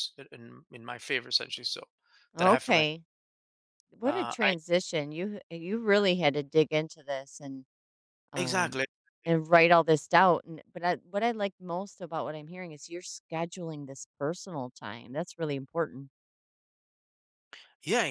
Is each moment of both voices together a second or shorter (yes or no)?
yes